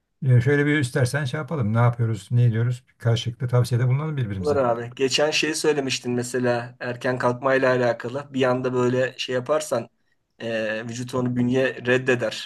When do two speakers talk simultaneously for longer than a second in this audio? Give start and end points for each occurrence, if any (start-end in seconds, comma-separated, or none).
none